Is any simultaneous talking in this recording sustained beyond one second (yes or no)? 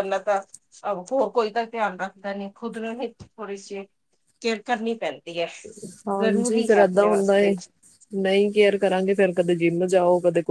no